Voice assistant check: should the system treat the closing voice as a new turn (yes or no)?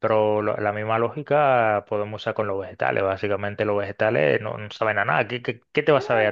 yes